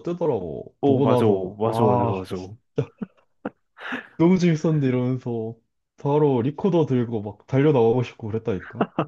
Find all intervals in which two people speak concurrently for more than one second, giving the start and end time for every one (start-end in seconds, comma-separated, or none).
0.8-2.3